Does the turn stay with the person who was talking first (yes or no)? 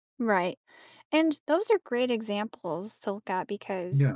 yes